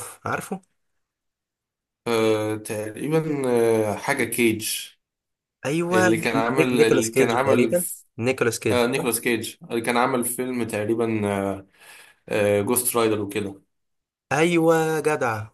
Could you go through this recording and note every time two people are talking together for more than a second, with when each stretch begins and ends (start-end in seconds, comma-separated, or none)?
5.9-8.1